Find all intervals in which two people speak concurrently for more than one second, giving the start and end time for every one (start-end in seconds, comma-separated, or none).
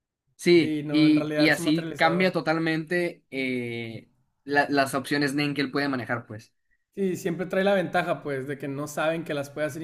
0.6-2.4